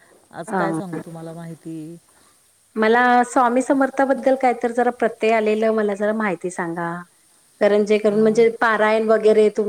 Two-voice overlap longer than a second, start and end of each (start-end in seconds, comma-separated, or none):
none